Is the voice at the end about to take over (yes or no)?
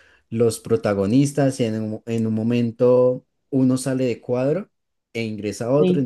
no